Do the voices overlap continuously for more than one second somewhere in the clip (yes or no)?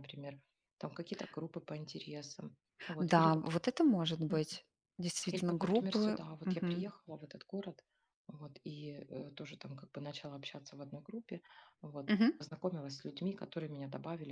yes